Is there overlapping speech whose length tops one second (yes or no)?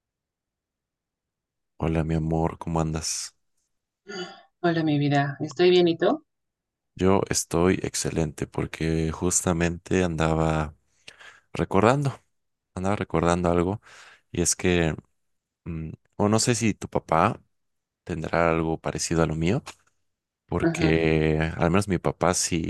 no